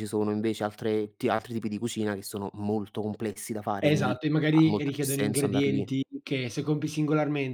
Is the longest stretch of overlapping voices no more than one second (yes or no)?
no